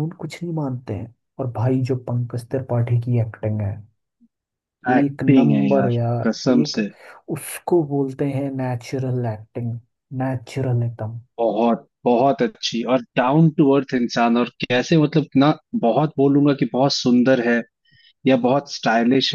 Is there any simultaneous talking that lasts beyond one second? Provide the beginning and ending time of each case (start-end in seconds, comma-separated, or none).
4.9-6.8